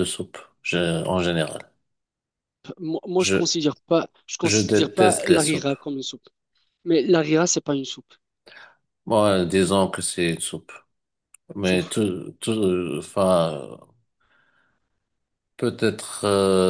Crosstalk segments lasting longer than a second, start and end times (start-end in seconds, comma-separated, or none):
4.5-5.7